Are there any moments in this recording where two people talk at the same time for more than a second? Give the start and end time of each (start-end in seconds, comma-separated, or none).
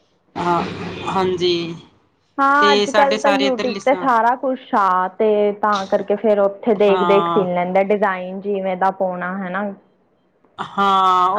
2.6-4.1